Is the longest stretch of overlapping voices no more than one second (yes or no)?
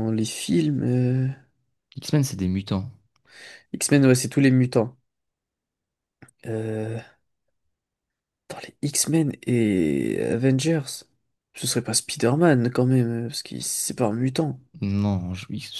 yes